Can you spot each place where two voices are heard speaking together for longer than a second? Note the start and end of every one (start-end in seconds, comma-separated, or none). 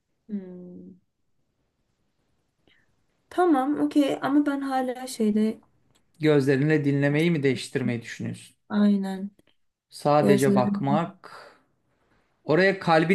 none